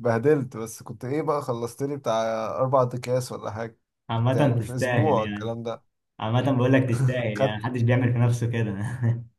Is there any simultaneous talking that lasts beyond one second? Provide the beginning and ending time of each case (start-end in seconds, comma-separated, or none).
4.1-5.5